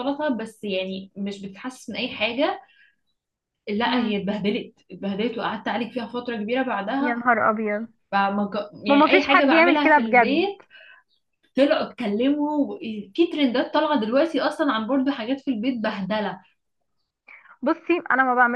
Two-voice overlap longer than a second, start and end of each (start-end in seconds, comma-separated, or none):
8.9-10.5